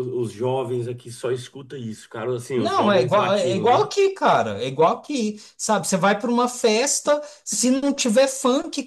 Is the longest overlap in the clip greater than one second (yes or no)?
yes